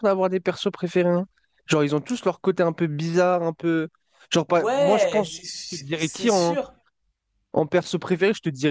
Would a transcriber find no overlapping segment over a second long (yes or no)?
no